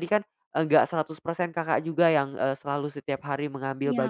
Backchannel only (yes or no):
yes